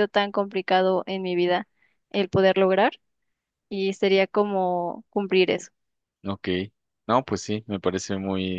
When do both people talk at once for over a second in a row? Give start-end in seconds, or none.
none